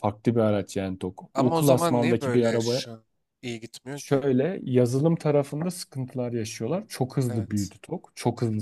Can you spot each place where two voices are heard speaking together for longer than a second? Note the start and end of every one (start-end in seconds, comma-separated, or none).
1.3-2.8